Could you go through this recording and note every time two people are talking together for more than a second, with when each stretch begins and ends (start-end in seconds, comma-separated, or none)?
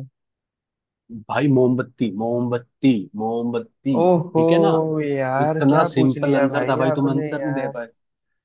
5.5-7.7